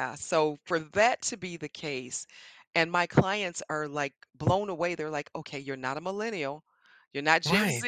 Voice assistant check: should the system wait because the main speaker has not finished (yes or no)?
yes